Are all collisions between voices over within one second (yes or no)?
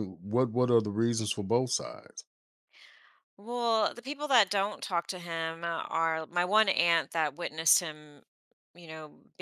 yes